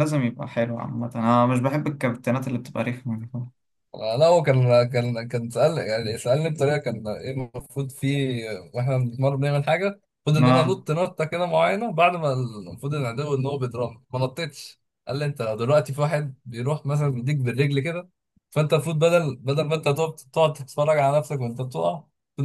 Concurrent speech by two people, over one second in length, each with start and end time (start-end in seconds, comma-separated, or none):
none